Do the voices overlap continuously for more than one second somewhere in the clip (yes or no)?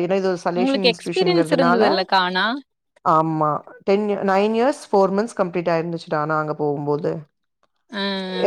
yes